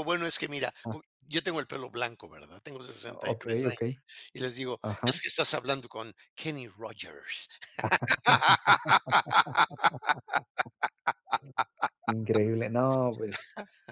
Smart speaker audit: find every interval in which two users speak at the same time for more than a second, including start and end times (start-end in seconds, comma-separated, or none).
none